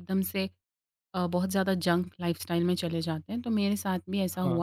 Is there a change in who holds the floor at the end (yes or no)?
no